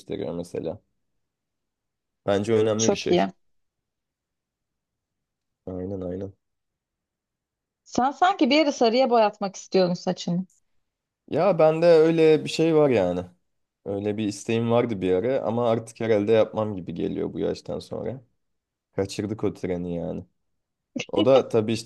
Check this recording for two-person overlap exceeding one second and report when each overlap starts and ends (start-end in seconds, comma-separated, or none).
none